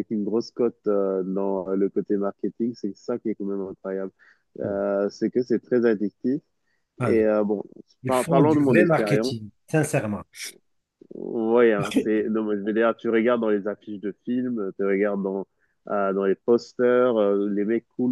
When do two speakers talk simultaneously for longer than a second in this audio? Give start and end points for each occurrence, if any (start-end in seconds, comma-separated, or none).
8.1-9.3